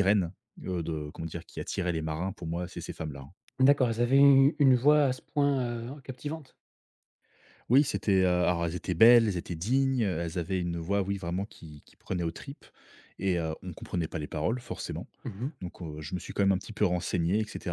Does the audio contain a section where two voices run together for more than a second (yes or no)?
no